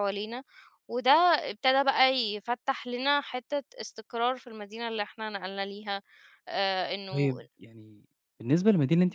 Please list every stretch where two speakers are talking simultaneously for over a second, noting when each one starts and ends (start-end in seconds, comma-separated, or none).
none